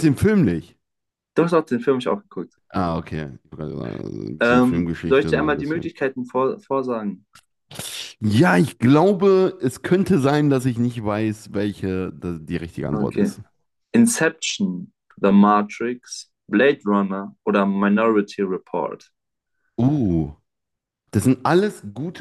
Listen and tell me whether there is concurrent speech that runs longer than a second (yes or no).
yes